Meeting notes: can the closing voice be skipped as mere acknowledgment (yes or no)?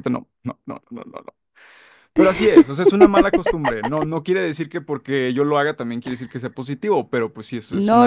no